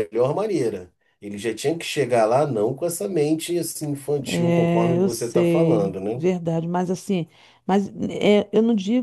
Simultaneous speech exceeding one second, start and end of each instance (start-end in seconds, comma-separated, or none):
4.5-6.2